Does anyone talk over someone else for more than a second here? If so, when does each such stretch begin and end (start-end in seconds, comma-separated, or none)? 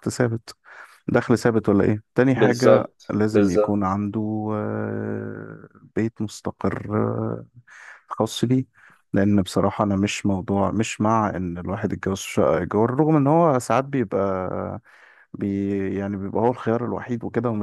2.3-4.0